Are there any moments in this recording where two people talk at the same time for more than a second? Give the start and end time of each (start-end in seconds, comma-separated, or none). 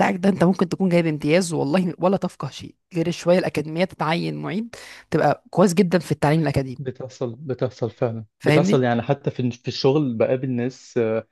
none